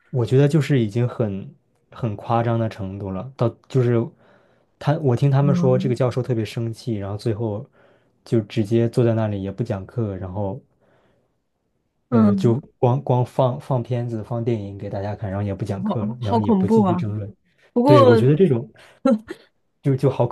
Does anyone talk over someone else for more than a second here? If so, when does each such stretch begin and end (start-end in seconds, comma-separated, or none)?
15.8-17.0